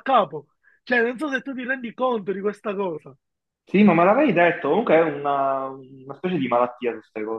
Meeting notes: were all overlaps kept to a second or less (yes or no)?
yes